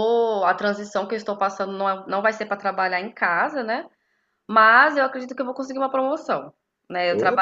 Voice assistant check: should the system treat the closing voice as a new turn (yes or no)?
no